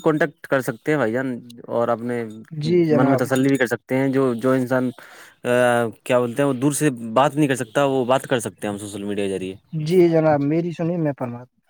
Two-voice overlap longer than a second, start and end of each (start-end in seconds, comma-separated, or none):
none